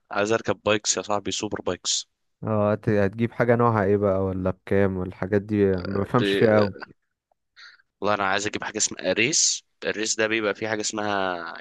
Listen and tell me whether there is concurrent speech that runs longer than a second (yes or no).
no